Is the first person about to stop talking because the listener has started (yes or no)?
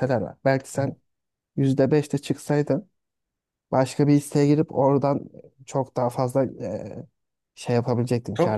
yes